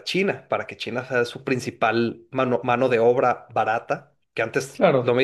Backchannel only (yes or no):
yes